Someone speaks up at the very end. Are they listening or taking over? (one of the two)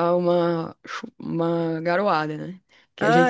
listening